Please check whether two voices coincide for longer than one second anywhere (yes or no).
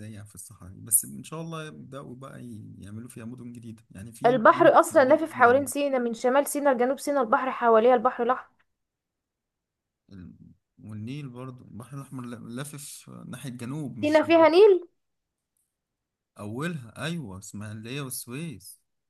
yes